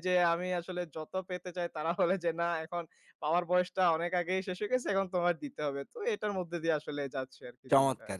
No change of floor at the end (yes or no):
no